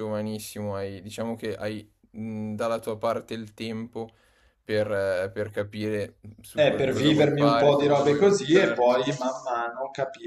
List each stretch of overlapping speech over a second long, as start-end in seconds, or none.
6.5-8.9